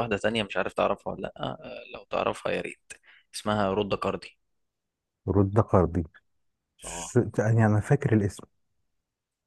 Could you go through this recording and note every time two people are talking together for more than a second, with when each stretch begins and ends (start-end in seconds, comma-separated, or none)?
none